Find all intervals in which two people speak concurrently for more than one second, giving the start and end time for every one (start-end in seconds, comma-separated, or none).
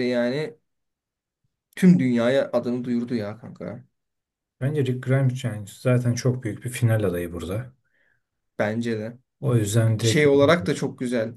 none